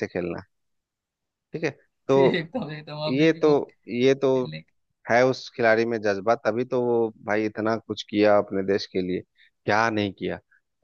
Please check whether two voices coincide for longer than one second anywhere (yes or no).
no